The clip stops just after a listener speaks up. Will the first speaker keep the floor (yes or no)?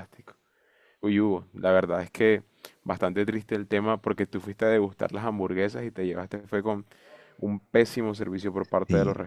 yes